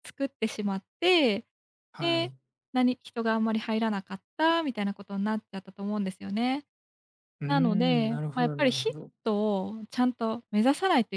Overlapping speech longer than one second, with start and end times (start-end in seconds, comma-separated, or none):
7.5-9.1